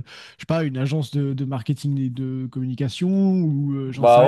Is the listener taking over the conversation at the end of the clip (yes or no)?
yes